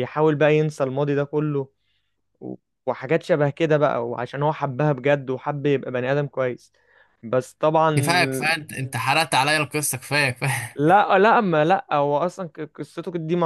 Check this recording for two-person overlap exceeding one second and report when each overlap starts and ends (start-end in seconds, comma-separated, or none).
none